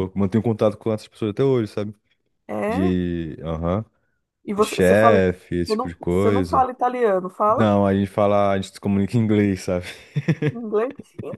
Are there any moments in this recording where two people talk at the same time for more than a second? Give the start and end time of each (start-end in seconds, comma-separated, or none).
4.6-6.7